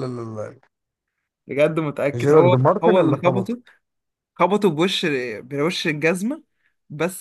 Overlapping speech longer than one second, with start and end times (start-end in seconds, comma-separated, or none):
2.2-3.6